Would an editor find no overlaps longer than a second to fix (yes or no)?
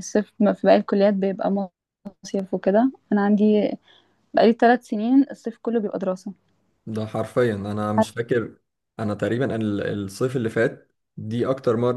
yes